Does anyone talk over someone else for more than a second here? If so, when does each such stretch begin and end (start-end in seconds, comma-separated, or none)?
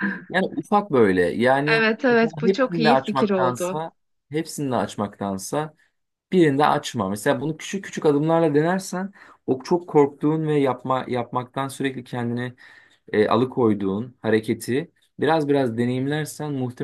1.7-3.8